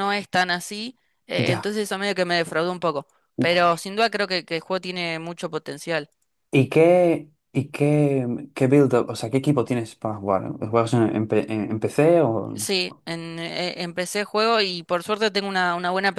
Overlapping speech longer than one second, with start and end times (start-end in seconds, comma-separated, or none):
none